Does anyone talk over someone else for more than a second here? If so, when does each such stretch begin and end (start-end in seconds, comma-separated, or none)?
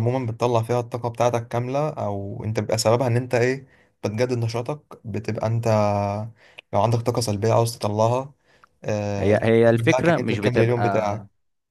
9.2-10.8